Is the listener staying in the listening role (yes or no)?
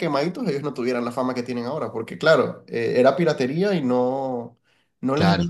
yes